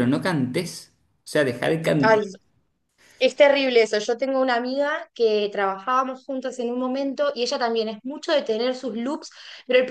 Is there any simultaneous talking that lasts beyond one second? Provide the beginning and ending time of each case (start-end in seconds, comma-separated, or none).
none